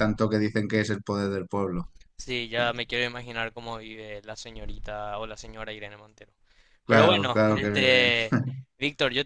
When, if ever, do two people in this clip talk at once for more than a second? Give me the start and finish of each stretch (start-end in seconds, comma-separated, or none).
6.9-8.1